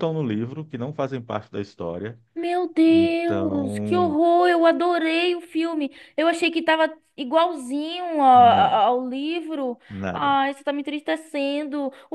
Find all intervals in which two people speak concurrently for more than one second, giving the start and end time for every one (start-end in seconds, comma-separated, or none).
2.9-4.2